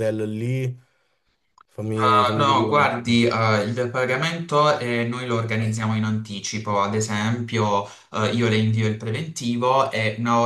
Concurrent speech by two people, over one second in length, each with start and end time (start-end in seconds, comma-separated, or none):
2.0-3.2